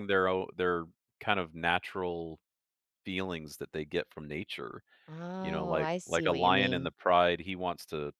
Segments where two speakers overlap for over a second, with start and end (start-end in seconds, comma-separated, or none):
5.4-6.9